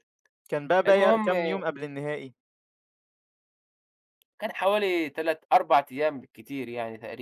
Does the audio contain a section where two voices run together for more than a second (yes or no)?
no